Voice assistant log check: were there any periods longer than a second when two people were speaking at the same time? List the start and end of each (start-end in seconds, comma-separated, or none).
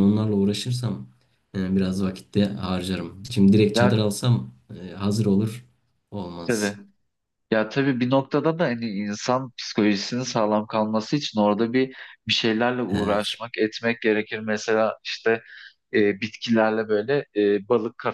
none